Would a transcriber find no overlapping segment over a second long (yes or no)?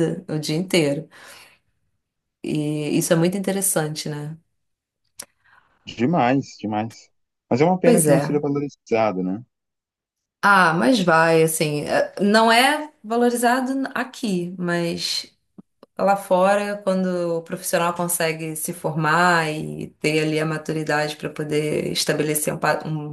yes